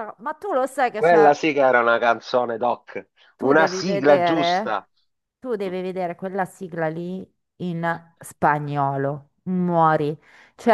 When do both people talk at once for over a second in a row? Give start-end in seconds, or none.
3.4-4.8